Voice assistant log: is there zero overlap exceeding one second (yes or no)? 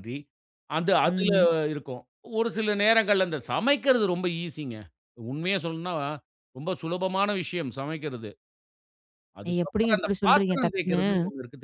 no